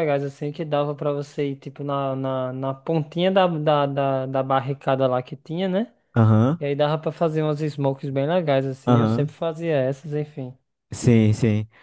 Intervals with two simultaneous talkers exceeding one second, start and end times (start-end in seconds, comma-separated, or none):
none